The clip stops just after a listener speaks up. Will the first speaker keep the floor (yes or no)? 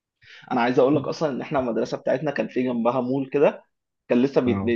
yes